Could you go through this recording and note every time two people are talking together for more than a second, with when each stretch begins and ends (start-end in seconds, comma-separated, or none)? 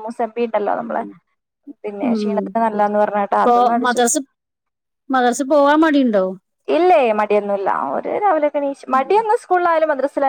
none